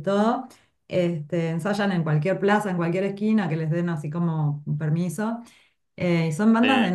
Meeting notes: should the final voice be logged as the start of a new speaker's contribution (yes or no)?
no